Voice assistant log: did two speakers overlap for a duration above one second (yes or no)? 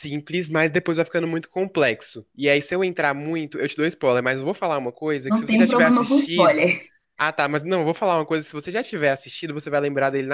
yes